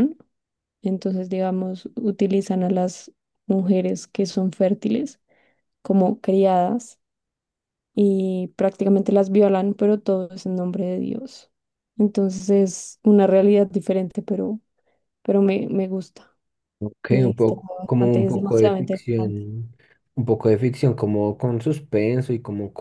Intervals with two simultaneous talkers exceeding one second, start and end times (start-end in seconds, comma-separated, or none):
17.1-19.5